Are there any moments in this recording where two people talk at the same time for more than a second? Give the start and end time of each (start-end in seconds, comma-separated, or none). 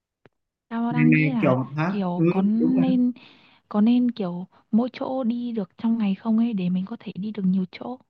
0.9-2.9